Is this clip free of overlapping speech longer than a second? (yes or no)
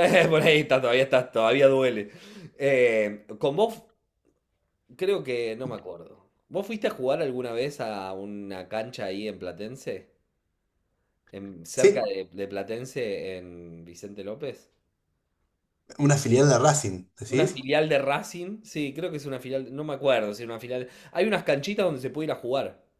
yes